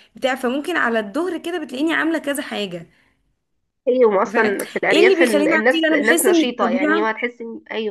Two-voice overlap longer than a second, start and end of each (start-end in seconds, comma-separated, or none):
4.3-7.2